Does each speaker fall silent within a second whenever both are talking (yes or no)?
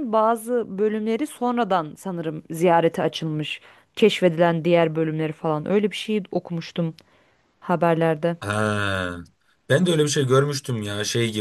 yes